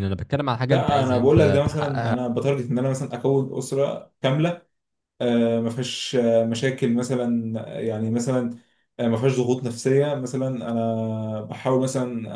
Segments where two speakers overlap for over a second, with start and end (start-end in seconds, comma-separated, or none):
0.7-2.2